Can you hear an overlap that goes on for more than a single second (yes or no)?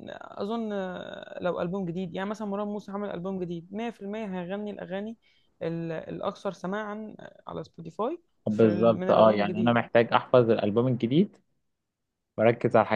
yes